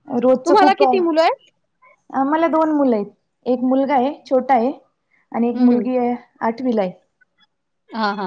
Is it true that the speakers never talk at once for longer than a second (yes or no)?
yes